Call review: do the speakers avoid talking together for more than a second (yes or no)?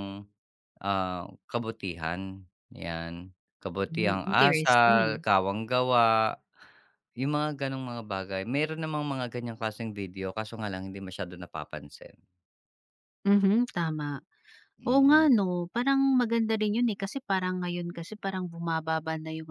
no